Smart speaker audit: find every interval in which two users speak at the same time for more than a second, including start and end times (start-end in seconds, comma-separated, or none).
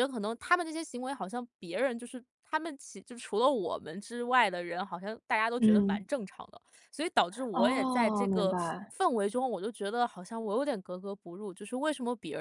7.5-8.9